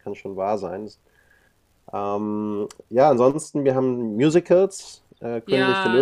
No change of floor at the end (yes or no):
no